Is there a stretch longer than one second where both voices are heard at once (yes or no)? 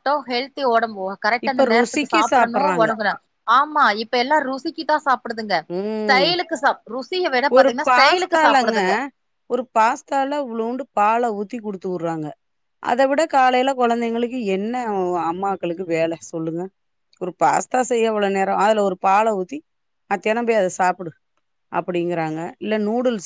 yes